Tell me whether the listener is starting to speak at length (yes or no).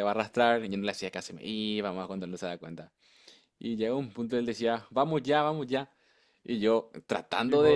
no